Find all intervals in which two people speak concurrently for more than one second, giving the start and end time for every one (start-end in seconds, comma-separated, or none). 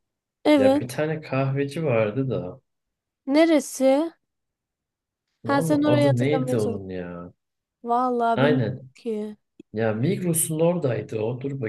5.4-6.8